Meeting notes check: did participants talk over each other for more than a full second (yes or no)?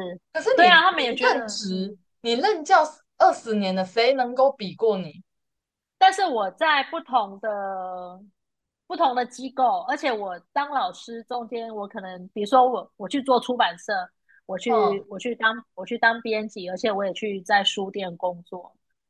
yes